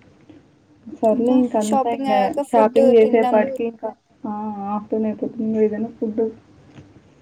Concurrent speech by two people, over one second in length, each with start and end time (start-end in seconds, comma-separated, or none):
1.1-3.4